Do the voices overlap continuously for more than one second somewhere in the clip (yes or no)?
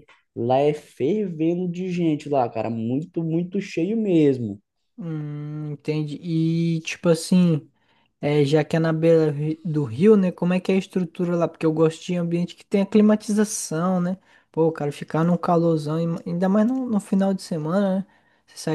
no